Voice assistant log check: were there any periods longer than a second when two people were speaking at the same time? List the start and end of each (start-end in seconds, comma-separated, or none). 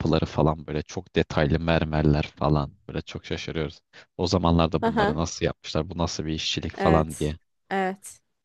none